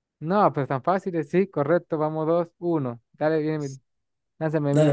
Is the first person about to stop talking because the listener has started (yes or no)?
yes